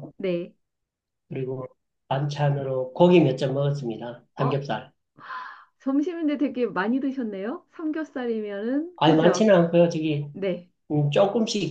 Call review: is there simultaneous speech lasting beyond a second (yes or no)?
no